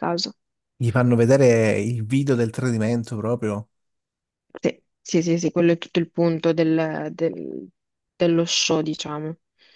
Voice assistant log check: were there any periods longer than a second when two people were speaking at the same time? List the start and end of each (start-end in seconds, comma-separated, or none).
none